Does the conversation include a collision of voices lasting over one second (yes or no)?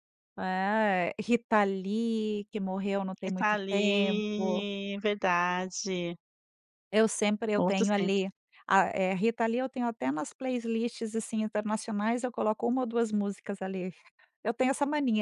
yes